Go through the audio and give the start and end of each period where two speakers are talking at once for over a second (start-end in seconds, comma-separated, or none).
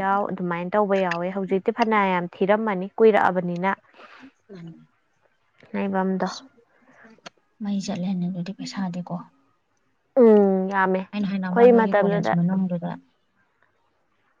11.1-12.3